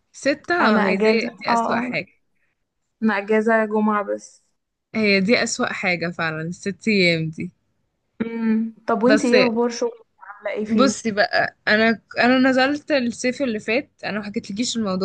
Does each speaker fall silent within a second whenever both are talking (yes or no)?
no